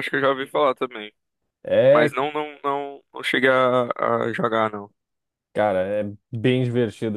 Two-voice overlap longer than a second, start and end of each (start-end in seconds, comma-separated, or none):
none